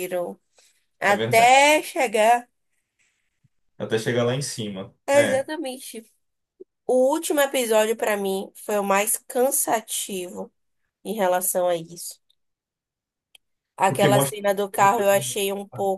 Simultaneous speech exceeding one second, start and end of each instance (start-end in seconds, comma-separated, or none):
13.9-15.3